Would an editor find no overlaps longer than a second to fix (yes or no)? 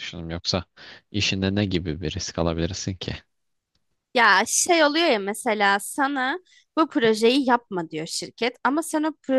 yes